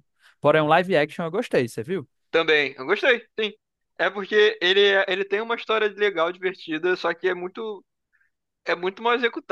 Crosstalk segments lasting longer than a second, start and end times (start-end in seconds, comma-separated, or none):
none